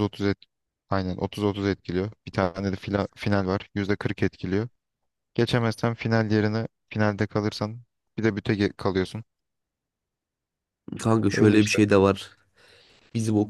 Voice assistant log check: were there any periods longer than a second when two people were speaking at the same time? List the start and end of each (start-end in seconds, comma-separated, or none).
none